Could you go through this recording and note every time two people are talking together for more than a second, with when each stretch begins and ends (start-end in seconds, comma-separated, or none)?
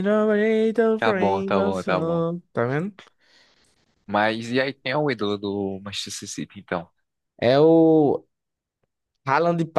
1.0-2.2